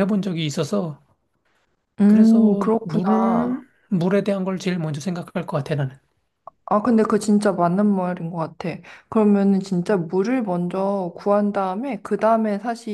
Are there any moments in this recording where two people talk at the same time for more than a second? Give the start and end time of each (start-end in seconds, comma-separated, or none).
2.1-3.6